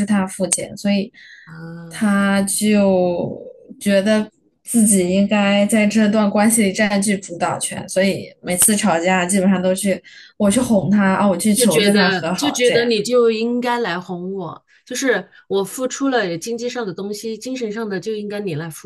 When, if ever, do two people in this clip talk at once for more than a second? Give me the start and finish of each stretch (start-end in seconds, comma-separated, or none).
11.5-12.9